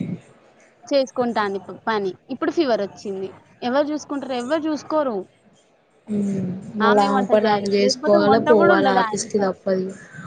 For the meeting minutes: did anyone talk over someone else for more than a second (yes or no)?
yes